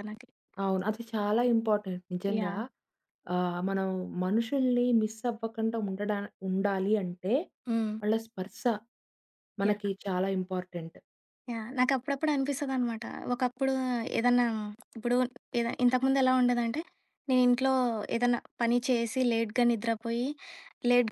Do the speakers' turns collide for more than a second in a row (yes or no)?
no